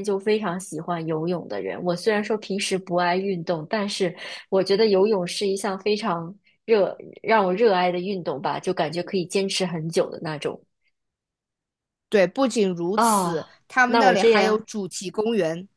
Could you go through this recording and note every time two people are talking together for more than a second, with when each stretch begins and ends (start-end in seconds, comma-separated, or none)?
12.9-14.7